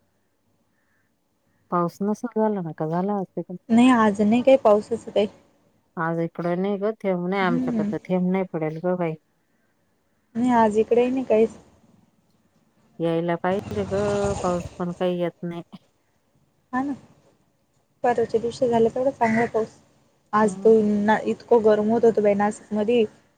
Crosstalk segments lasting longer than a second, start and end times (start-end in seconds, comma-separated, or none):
none